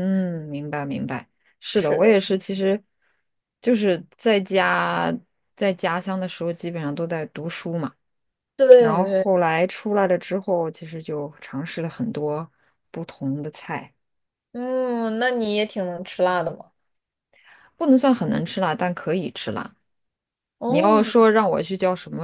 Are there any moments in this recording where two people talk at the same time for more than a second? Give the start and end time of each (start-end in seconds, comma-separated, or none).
none